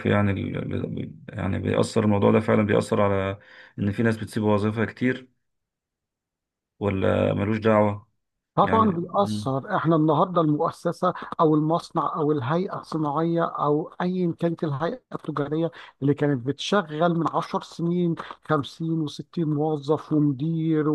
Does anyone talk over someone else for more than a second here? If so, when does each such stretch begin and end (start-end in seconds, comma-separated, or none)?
none